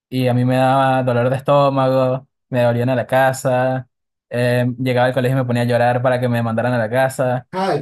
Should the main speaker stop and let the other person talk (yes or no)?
yes